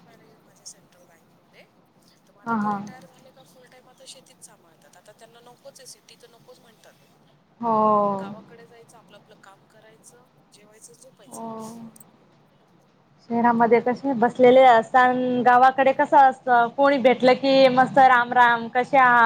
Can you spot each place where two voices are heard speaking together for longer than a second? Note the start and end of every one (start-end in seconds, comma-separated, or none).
none